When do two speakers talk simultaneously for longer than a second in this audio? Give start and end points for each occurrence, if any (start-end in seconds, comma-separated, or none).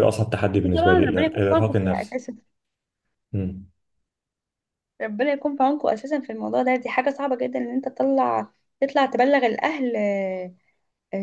0.5-2.2